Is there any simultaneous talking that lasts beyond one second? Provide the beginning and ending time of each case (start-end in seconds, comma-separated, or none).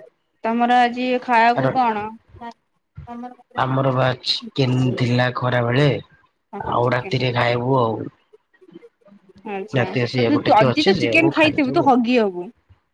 9.8-11.9